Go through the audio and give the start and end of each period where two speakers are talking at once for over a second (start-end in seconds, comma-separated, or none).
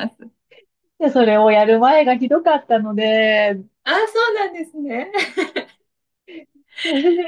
none